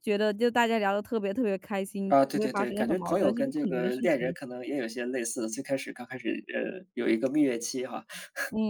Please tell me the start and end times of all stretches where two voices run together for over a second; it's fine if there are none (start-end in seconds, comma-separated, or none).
2.1-4.3